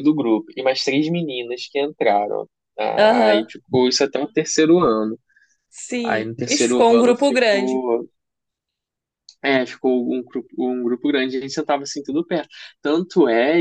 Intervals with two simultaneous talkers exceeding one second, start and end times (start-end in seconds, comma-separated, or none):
6.0-7.8